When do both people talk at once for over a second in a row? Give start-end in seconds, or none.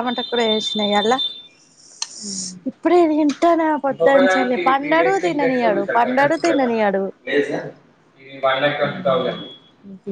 3.9-6.0